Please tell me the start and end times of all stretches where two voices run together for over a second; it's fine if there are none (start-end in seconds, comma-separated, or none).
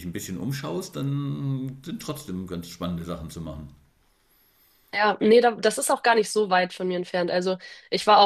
none